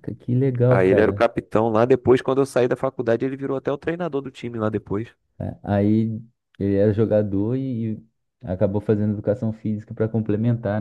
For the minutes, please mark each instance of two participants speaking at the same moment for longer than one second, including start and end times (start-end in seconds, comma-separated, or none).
none